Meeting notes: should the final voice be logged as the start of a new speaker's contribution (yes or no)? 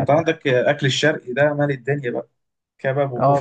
yes